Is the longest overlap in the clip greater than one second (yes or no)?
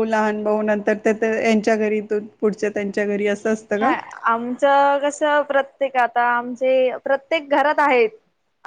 no